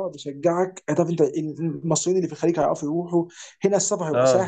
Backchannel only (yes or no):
yes